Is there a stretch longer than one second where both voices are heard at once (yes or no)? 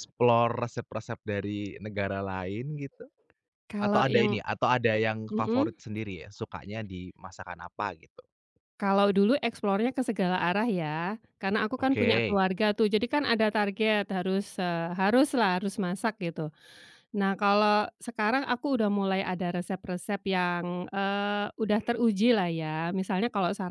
no